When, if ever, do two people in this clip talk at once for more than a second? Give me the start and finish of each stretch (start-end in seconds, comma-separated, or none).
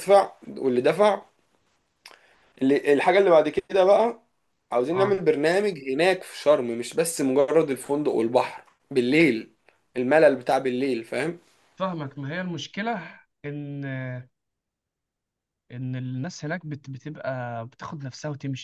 none